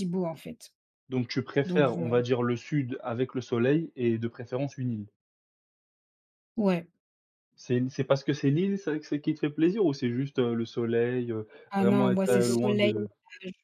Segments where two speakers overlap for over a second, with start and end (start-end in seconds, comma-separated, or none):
11.7-12.9